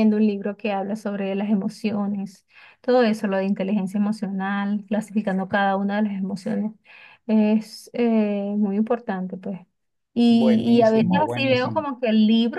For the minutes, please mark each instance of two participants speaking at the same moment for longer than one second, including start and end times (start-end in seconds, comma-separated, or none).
10.3-11.9